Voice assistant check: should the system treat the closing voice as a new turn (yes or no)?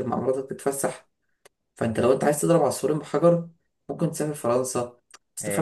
no